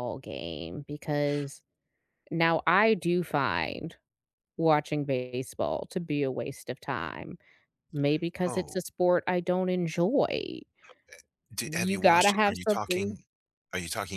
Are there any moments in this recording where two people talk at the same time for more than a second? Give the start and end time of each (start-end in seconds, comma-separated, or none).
11.6-13.2